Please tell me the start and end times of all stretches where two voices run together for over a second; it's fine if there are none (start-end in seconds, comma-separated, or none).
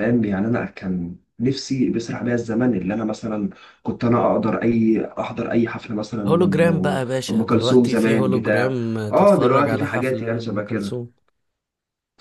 6.3-11.0